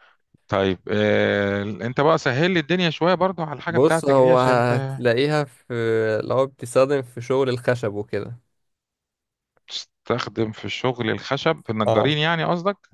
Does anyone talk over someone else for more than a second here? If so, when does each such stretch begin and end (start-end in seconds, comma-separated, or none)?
3.7-5.0